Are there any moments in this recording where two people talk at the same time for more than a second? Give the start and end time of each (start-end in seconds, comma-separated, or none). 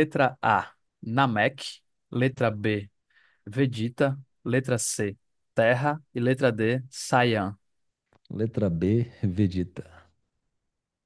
none